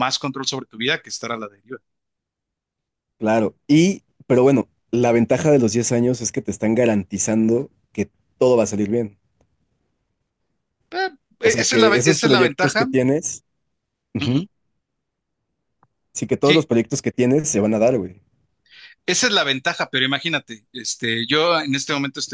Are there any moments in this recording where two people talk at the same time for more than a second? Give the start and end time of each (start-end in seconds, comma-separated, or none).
11.6-12.9